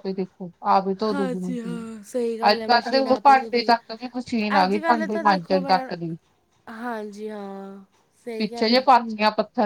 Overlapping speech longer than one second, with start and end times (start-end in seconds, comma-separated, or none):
2.5-3.7, 4.6-5.9